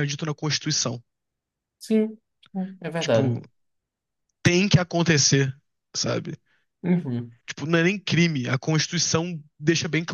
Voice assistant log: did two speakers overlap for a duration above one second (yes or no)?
no